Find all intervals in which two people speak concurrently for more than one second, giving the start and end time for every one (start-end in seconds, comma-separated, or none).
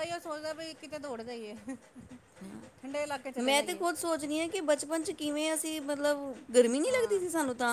none